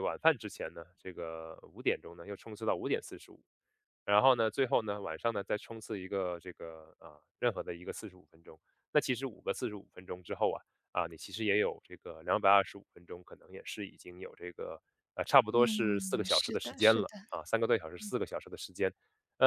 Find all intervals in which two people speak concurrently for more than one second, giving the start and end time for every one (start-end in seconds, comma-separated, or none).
15.5-17.1